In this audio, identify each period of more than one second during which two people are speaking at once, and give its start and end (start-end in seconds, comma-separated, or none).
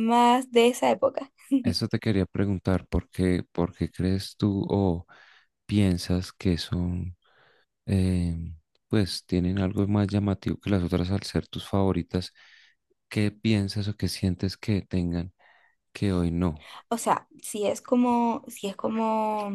none